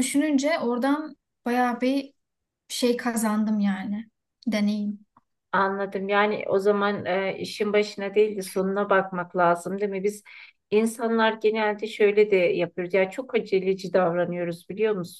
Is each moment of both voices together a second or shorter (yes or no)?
yes